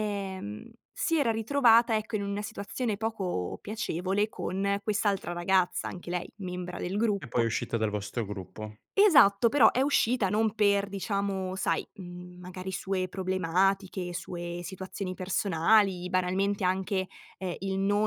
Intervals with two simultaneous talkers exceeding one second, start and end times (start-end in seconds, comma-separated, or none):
none